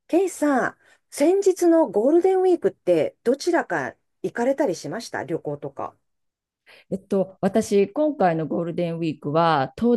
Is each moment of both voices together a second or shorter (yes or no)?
yes